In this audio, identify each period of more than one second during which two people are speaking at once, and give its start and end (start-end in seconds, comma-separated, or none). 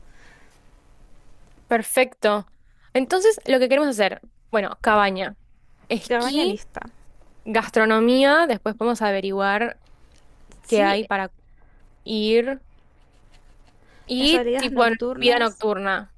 14.2-15.6